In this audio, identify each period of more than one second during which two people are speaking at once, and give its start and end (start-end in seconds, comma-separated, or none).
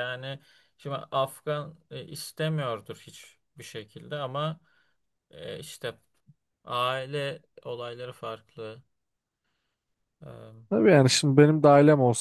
none